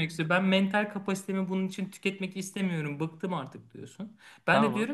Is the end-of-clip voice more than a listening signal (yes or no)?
no